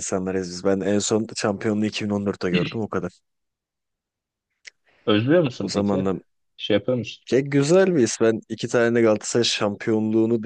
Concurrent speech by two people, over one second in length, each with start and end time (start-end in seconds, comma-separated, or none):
none